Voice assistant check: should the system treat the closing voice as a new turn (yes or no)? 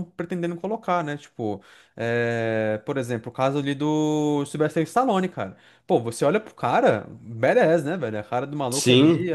no